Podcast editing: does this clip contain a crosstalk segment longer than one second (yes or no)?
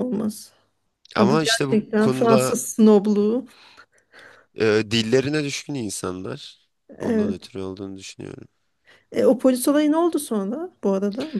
yes